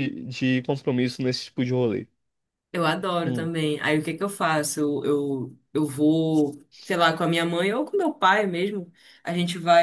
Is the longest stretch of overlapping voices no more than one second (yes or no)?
yes